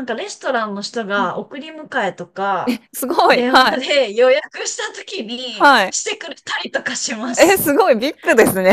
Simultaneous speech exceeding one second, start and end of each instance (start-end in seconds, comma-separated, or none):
none